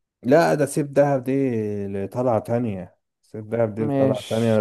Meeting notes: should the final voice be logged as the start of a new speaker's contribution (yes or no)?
no